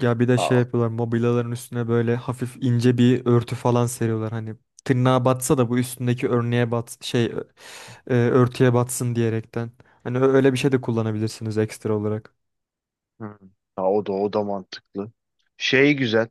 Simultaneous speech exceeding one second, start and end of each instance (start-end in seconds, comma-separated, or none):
none